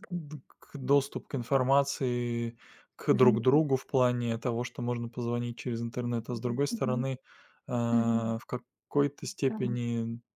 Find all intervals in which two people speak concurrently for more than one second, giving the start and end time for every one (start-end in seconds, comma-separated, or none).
none